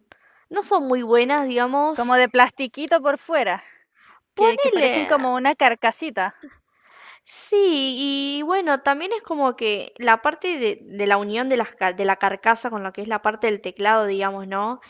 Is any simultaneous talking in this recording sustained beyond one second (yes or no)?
no